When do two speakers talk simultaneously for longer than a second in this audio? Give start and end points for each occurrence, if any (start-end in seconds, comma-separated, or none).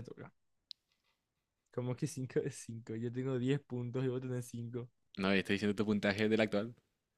none